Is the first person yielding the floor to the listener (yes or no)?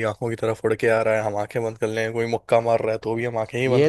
yes